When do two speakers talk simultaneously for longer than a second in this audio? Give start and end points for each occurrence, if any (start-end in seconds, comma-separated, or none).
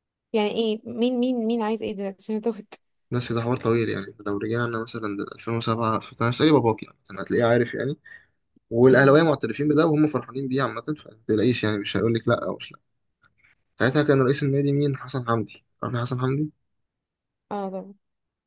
none